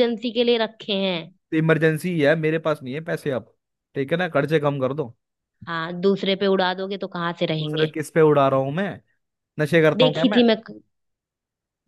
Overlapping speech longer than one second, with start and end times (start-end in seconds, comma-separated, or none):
none